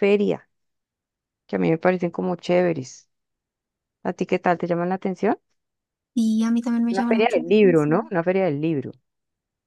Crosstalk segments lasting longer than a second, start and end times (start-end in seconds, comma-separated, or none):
6.9-8.1